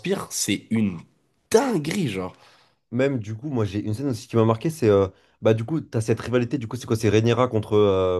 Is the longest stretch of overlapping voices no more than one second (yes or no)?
yes